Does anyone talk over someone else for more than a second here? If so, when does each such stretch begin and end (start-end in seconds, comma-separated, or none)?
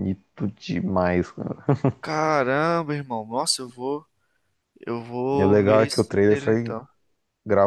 5.4-6.8